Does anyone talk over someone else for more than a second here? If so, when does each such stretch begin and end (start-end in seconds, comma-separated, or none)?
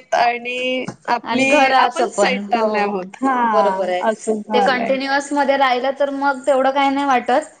1.3-2.8